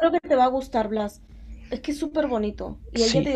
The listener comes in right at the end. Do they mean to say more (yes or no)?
no